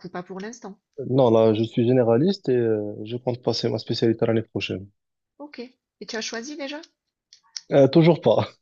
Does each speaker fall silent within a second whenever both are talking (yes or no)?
yes